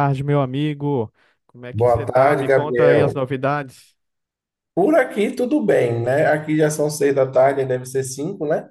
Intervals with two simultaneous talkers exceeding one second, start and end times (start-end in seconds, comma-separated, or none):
1.7-3.1